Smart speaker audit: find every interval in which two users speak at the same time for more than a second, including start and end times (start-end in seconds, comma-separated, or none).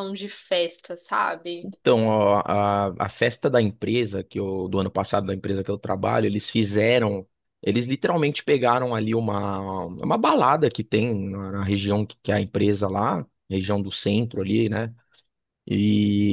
none